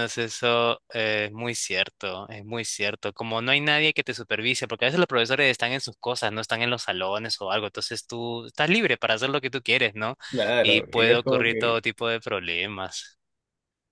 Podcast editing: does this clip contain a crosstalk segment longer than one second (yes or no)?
yes